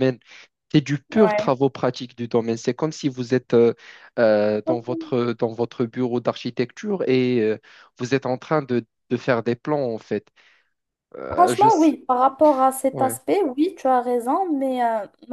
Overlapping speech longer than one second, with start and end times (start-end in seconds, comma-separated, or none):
none